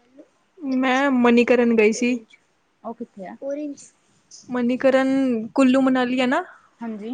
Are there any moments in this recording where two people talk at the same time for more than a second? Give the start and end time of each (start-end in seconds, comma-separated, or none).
0.8-2.2